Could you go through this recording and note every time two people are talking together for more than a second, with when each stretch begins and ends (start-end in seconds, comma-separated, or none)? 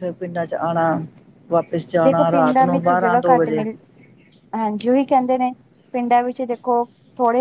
2.0-3.6